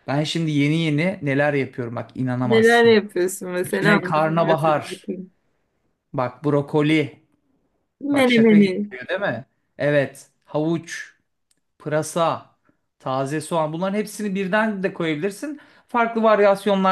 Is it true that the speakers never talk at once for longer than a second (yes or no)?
no